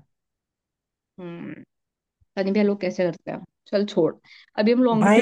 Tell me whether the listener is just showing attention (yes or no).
no